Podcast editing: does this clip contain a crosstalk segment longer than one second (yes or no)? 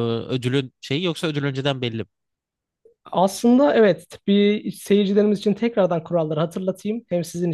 no